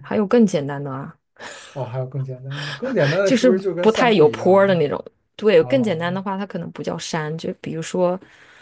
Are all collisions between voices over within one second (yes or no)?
no